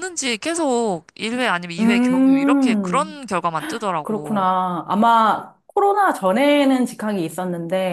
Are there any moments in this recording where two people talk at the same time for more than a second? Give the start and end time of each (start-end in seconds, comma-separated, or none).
1.8-3.2